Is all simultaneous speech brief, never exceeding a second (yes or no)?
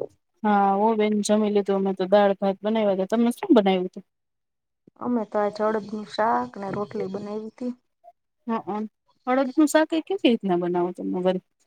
yes